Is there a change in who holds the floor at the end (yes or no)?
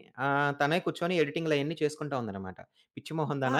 no